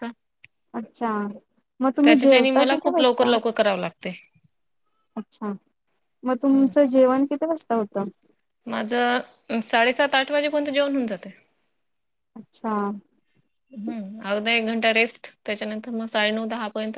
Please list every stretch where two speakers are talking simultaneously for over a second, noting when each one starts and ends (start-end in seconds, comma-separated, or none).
2.0-3.4